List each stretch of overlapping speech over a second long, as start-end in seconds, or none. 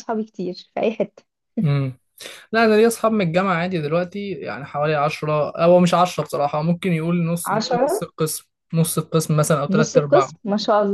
none